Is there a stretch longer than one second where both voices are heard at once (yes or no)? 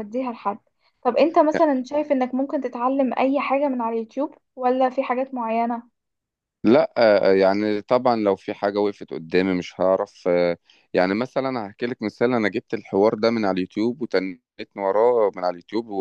no